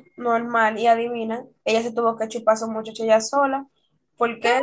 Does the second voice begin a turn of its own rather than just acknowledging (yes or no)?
yes